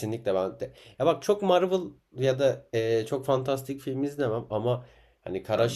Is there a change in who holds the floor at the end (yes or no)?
no